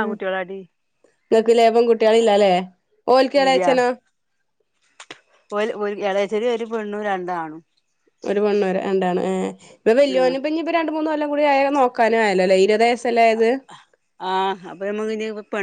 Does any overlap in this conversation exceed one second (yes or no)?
no